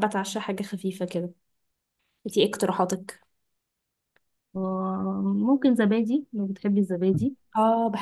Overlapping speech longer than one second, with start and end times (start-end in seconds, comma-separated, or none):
none